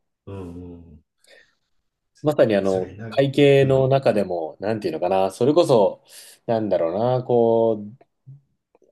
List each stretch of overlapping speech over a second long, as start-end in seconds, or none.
2.6-3.9